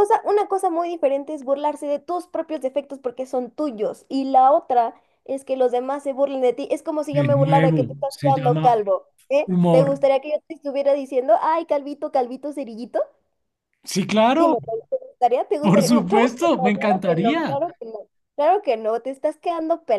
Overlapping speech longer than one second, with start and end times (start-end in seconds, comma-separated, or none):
7.1-8.7, 15.6-17.6